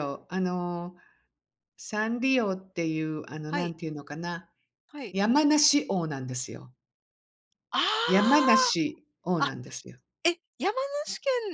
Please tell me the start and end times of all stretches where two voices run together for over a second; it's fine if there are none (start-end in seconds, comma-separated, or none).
none